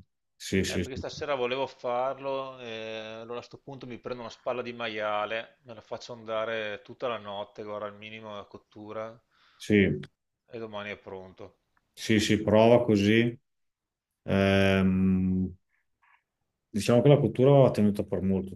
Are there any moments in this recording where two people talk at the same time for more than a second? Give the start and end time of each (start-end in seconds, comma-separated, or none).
none